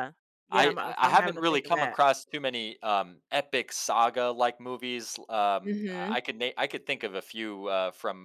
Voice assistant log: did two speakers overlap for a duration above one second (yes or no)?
yes